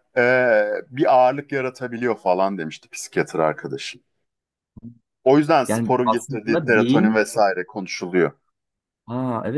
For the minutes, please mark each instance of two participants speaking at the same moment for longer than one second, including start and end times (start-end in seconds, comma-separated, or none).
5.7-7.2